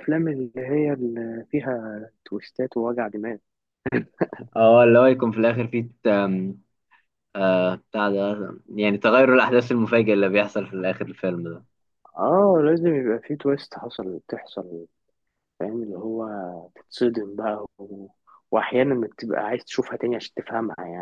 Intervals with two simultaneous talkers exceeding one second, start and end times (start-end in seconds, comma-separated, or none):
none